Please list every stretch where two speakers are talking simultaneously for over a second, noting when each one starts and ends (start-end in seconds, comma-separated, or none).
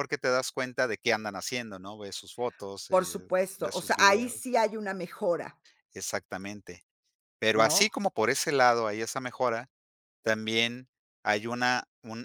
2.9-4.5